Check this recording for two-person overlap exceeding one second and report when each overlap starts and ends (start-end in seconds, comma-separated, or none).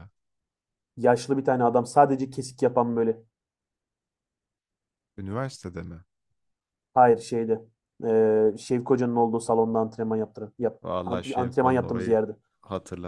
10.8-12.2